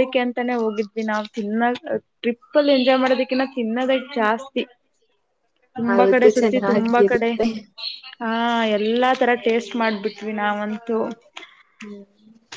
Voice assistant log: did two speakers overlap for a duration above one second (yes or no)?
yes